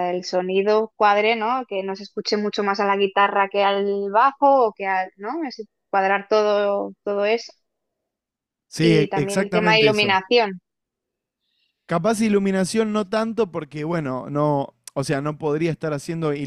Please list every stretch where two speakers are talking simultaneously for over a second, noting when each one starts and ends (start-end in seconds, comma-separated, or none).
8.8-10.2